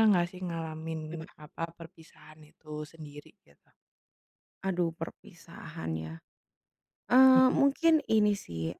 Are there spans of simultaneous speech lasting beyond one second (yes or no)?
no